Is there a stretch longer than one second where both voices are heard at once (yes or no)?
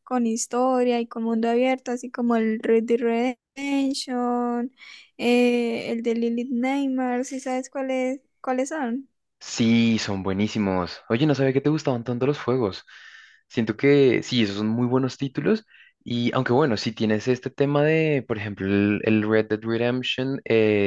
no